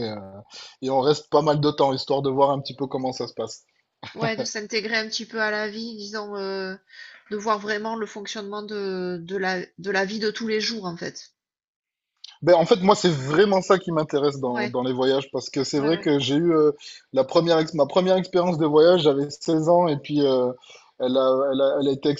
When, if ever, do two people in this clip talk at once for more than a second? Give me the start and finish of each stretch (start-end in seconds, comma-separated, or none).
none